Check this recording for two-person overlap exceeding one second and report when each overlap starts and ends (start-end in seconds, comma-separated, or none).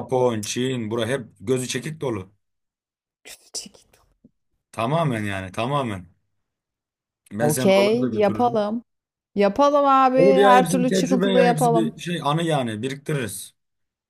7.4-8.7, 10.2-12.0